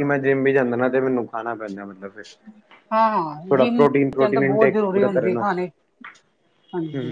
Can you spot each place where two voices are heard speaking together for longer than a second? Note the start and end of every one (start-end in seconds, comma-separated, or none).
3.5-5.6